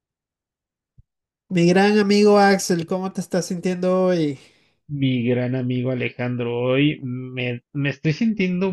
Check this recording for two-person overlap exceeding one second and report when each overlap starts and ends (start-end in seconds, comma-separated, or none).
none